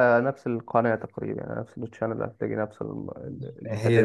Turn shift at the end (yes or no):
yes